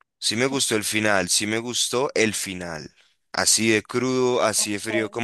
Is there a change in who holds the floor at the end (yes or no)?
no